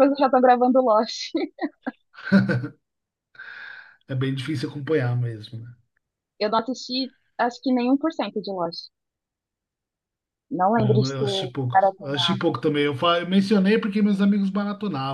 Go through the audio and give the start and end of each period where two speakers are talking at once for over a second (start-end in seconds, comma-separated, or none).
10.8-12.4